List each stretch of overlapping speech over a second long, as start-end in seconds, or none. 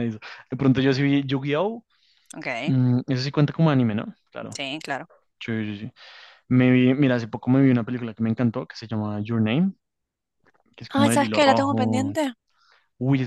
10.9-12.1